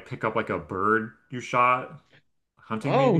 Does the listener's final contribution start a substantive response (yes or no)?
yes